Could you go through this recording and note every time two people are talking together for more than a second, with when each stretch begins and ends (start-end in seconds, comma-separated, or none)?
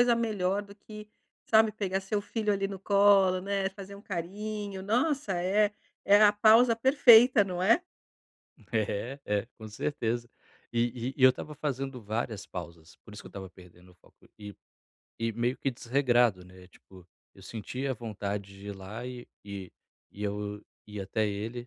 none